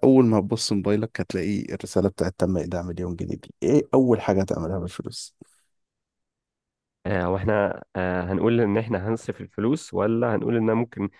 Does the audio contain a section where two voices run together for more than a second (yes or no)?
no